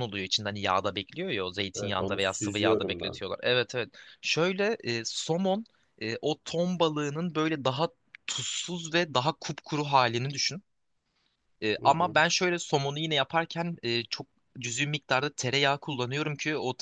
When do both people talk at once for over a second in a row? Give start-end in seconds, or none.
1.7-3.2